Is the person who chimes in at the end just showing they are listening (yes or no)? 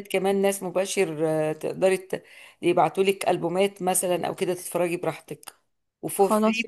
yes